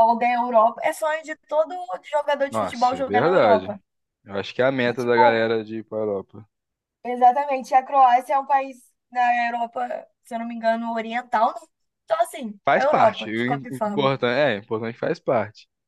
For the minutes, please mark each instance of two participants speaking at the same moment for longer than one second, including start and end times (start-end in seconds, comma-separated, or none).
2.5-3.7, 12.7-14.1